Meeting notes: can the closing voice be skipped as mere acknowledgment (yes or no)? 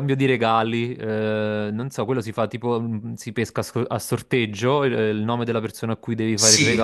no